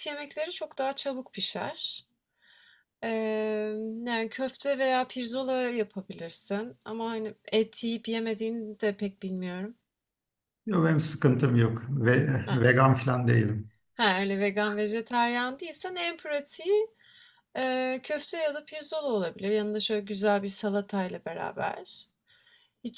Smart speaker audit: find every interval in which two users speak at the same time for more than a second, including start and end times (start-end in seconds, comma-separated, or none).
none